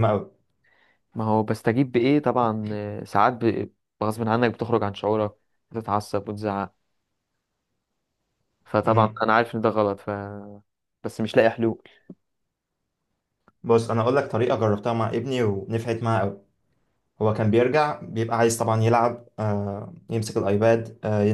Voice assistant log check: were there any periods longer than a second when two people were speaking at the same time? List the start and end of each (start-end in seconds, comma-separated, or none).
none